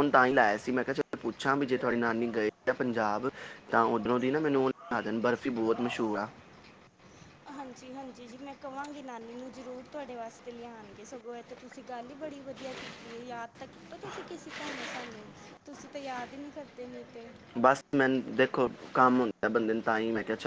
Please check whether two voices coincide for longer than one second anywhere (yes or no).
no